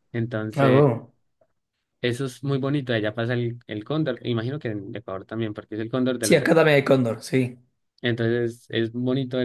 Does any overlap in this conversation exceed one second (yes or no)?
no